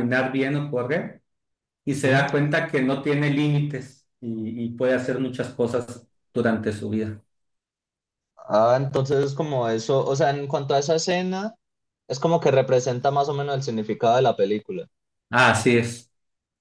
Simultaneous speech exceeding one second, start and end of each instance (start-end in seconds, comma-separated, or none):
none